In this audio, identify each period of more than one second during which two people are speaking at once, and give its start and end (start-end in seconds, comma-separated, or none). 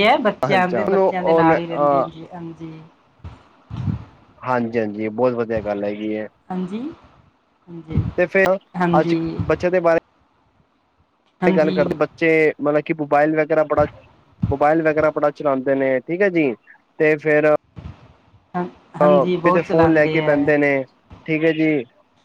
0.6-2.0, 19.0-20.5